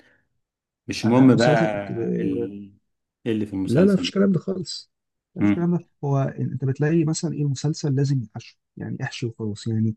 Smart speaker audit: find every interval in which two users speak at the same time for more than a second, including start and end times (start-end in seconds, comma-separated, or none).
1.0-2.5